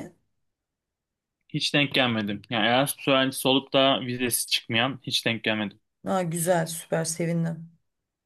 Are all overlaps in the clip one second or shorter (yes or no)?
yes